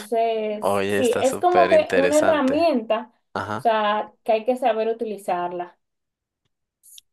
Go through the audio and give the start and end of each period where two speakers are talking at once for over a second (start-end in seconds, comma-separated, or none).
0.6-2.7